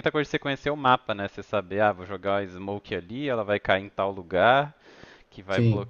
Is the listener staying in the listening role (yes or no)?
yes